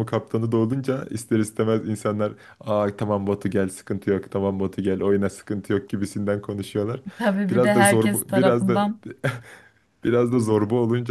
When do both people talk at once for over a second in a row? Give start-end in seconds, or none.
7.5-8.8